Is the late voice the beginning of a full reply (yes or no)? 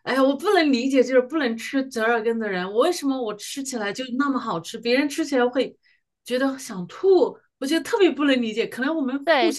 yes